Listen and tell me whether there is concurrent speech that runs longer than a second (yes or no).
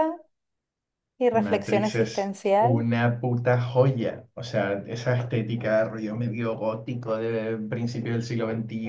yes